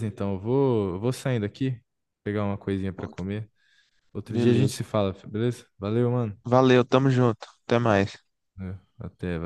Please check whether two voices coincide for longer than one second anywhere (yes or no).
no